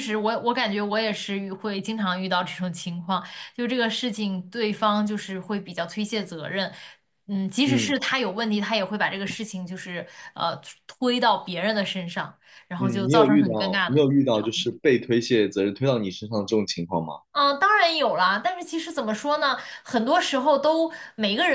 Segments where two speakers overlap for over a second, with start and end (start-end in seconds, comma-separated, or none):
12.8-14.7